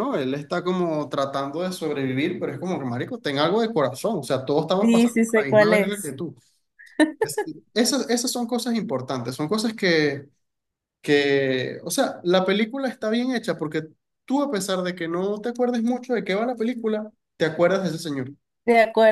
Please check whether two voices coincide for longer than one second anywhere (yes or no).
yes